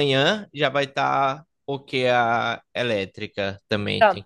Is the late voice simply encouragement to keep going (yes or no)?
no